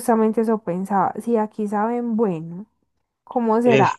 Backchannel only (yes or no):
yes